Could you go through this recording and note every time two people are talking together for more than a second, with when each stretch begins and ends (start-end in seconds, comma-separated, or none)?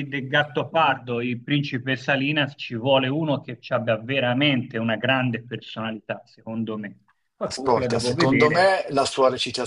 7.4-8.8